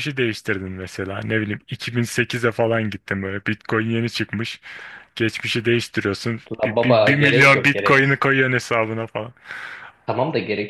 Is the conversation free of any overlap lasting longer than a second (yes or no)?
no